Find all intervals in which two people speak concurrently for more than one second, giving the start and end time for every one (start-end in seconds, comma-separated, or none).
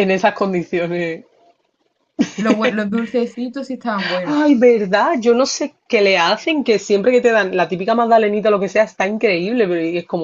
none